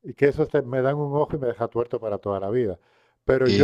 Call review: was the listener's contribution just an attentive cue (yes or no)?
yes